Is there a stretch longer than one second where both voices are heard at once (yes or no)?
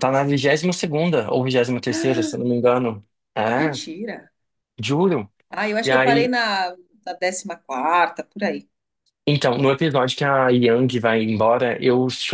no